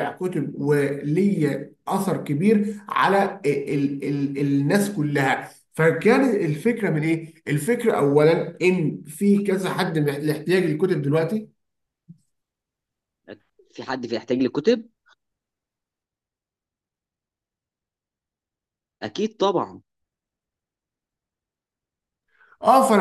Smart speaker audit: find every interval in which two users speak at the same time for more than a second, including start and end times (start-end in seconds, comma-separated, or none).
none